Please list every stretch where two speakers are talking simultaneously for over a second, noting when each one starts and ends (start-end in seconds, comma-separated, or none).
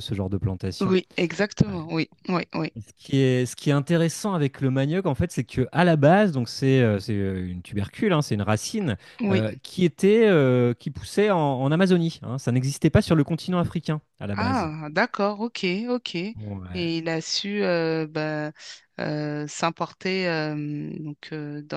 none